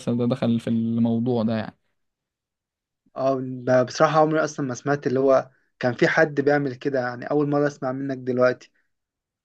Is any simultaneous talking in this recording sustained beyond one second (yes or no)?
no